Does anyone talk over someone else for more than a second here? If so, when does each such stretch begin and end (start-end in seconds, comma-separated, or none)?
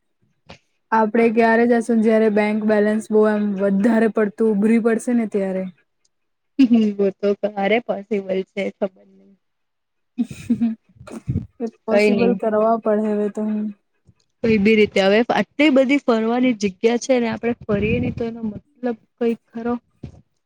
none